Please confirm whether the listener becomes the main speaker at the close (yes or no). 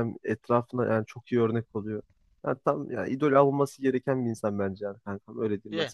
yes